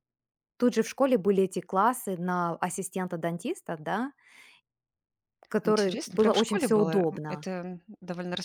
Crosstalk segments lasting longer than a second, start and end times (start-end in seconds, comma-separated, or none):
5.6-7.5